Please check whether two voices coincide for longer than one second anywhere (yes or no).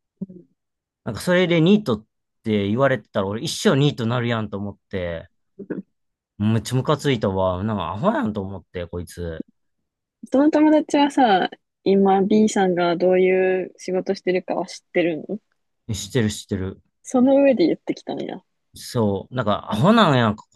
no